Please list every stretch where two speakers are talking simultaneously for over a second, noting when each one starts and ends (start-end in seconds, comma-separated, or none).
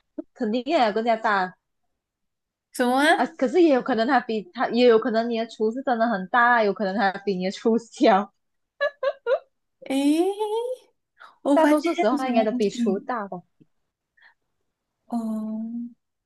11.5-13.1